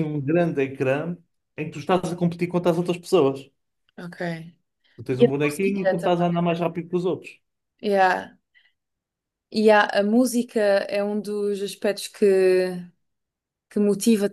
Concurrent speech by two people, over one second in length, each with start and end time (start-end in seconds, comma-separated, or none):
5.2-6.4